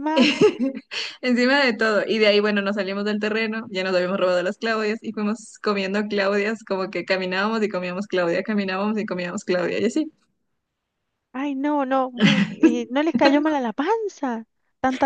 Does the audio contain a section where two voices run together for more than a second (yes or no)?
no